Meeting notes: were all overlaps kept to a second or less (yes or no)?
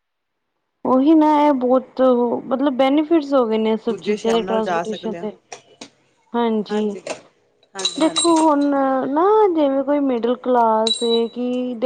no